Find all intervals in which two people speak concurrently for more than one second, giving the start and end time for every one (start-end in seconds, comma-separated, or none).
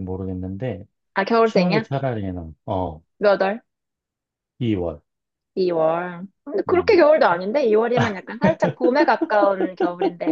none